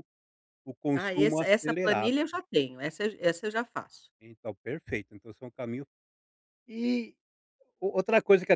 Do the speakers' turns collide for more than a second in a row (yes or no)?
yes